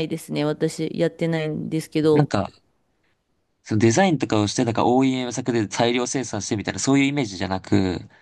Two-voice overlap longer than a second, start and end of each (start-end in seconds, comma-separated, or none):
none